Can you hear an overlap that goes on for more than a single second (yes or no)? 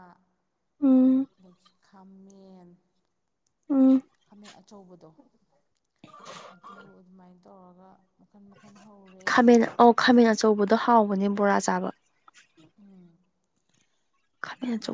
no